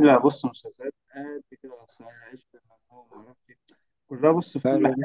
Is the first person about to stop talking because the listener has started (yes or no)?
no